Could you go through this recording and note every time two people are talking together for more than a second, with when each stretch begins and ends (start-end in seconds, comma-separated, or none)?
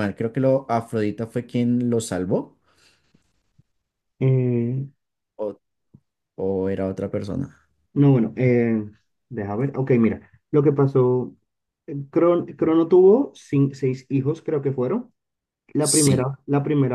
none